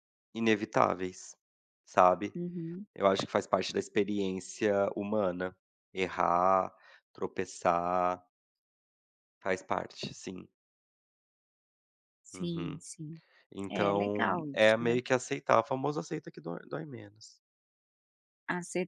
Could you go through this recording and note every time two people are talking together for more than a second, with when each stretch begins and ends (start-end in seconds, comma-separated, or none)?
13.7-15.0